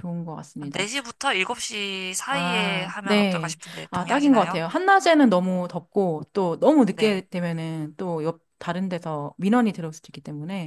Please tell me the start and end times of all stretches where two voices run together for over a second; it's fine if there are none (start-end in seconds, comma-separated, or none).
2.3-4.6